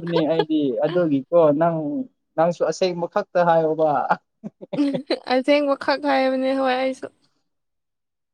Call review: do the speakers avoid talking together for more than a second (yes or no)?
yes